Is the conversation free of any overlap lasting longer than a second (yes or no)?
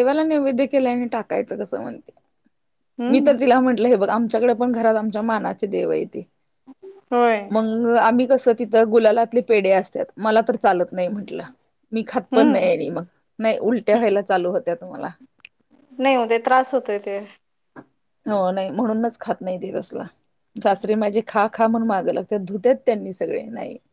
yes